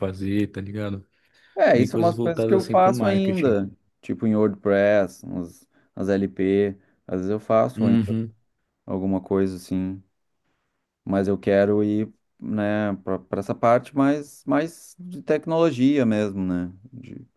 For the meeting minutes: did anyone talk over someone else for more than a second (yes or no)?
yes